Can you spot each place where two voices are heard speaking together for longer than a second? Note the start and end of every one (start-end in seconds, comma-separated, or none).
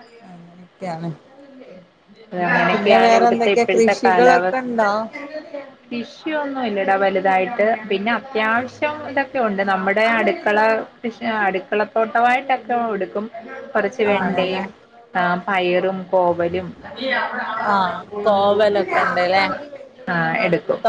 2.7-4.6